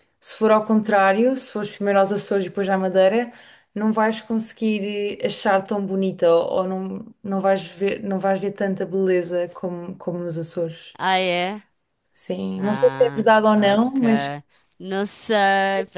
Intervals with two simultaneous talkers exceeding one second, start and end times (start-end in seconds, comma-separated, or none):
12.6-14.0